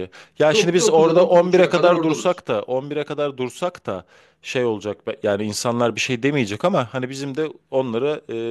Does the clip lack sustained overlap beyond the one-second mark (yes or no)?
no